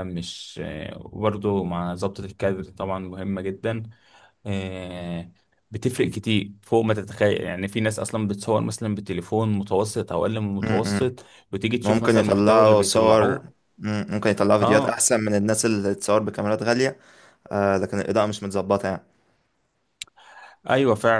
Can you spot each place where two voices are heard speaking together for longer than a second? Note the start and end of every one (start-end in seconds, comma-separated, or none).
11.8-13.6